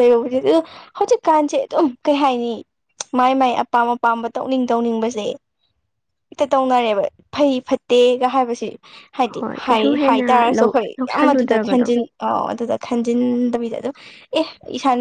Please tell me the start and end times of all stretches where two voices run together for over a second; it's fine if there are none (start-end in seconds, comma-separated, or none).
9.3-11.9